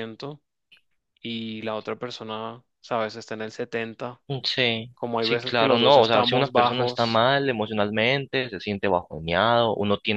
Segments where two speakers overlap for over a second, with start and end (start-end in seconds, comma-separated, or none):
4.9-7.2